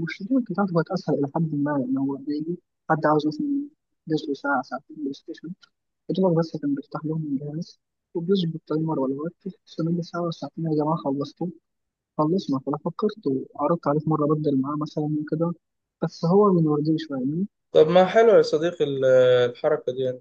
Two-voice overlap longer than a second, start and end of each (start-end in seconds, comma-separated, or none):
none